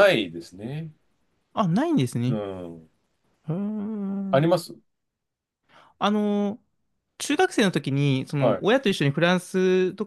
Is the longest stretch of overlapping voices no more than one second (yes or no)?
yes